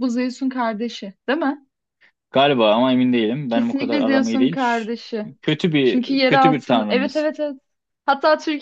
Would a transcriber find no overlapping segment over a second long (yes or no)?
no